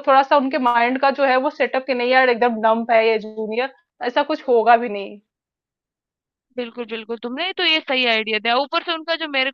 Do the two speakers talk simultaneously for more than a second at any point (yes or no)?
no